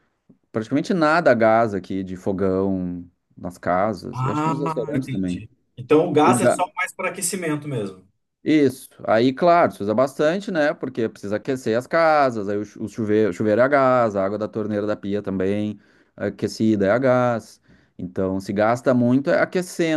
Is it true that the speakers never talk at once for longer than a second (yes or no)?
no